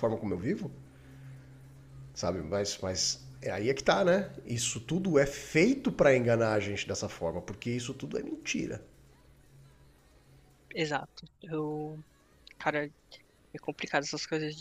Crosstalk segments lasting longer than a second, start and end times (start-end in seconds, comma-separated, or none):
none